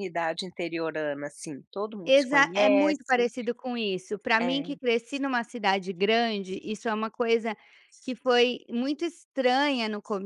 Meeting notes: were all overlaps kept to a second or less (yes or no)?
no